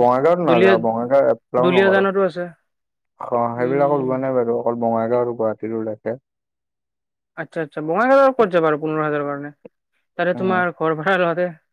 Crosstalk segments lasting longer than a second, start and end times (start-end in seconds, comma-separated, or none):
0.5-2.0